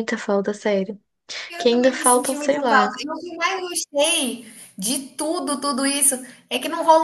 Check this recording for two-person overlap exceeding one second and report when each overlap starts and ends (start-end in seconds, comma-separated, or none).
1.6-3.0